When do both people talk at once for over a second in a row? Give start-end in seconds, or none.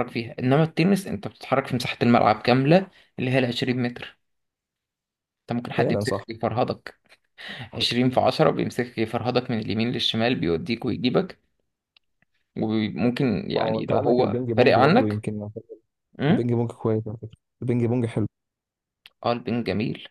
13.6-15.2